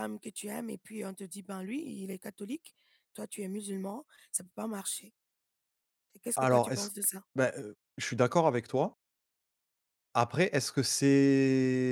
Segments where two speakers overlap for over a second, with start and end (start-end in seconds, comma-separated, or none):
none